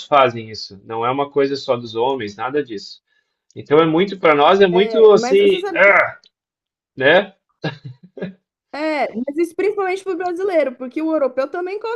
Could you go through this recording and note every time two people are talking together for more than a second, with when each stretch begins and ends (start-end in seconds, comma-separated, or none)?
4.7-5.9